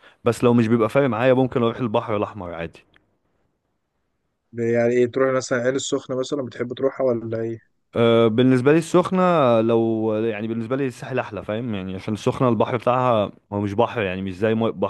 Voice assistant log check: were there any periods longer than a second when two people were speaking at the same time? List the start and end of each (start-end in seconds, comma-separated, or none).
none